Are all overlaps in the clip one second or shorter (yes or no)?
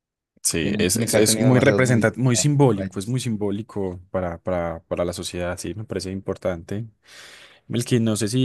no